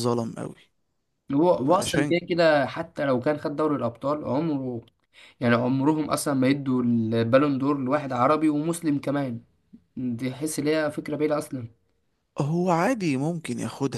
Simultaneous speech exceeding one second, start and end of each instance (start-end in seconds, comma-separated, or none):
none